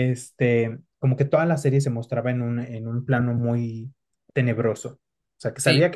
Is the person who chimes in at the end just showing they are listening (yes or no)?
yes